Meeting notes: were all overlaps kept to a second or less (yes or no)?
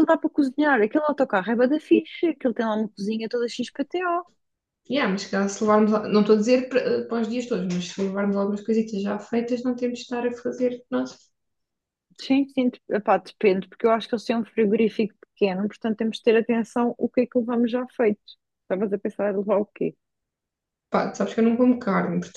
yes